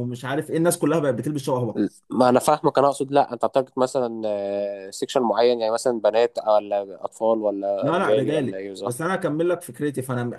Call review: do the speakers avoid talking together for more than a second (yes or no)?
no